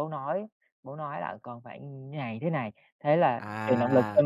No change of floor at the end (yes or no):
no